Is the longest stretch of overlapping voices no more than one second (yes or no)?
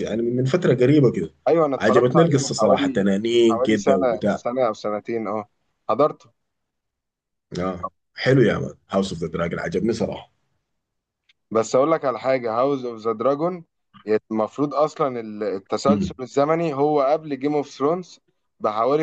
no